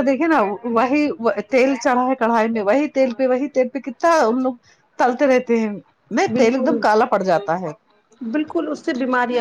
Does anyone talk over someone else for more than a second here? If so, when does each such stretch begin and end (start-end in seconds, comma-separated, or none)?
none